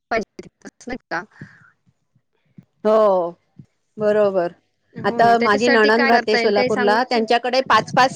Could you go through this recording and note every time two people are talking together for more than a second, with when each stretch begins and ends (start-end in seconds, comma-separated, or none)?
5.1-7.2